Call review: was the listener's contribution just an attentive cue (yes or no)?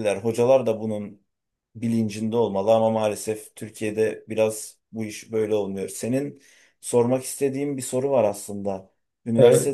yes